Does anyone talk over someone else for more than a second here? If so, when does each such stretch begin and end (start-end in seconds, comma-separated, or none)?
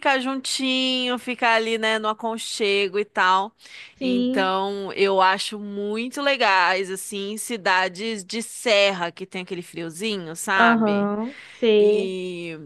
none